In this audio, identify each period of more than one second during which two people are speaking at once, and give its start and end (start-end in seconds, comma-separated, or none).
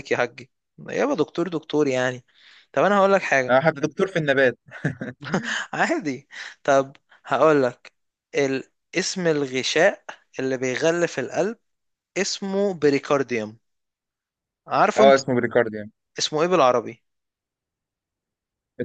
none